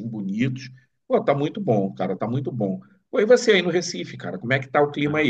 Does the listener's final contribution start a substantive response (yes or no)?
yes